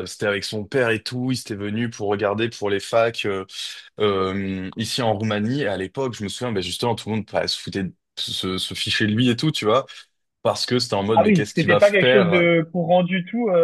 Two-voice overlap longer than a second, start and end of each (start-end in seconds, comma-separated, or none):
11.2-12.5